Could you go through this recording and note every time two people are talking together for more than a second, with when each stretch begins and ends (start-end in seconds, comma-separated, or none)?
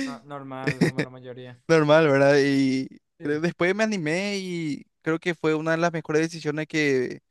none